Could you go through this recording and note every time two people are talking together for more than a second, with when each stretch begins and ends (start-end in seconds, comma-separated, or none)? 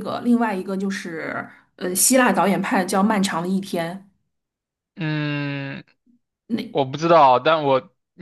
none